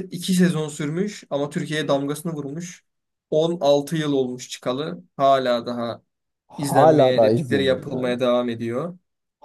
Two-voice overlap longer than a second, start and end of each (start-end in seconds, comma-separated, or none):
6.6-8.2